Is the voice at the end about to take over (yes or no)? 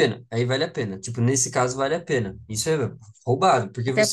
no